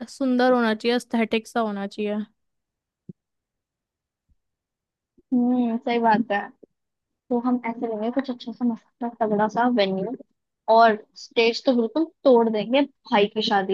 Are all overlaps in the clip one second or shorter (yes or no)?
yes